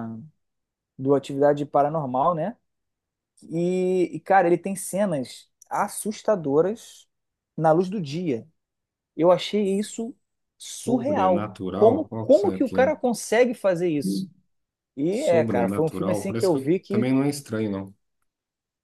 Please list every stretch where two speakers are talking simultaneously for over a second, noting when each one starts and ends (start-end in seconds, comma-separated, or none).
10.8-12.8, 15.1-17.1